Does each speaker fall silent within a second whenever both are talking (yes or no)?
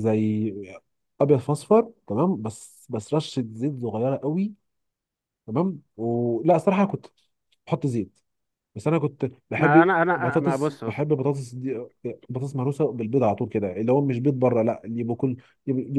no